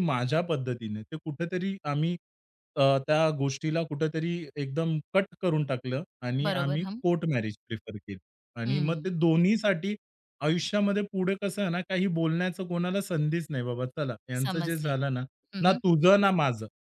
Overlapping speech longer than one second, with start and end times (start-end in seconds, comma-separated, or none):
none